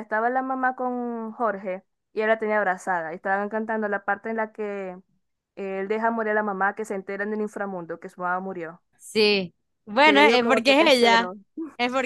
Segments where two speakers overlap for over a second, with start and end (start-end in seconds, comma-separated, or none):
10.0-11.3